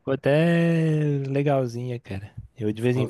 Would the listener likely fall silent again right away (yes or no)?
yes